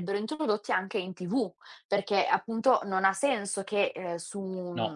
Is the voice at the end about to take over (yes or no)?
no